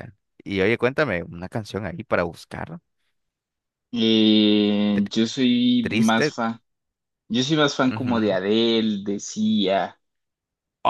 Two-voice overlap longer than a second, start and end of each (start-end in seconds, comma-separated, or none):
none